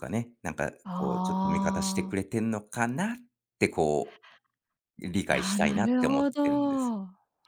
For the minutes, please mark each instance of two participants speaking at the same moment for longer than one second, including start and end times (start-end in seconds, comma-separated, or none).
0.8-2.2, 5.3-6.9